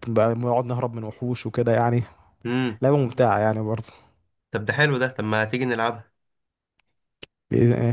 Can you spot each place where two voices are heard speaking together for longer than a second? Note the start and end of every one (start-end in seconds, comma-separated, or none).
none